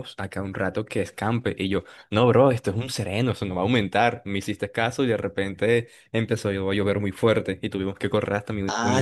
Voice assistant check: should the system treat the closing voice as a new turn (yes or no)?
yes